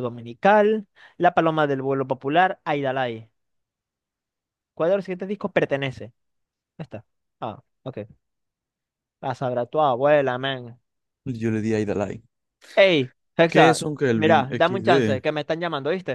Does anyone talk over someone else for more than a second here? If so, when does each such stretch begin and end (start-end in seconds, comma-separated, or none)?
13.5-15.2